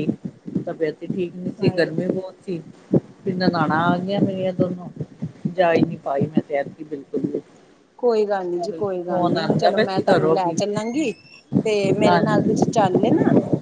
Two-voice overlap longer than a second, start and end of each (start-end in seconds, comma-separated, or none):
8.7-10.5